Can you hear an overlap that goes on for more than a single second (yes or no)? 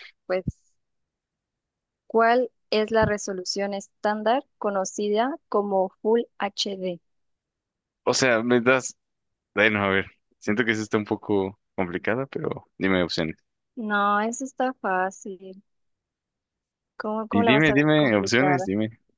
yes